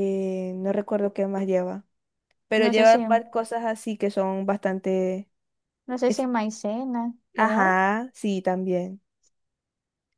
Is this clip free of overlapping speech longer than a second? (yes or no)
yes